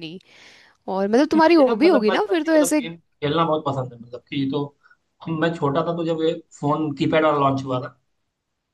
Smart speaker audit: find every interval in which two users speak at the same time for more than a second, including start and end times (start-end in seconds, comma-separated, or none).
1.4-2.8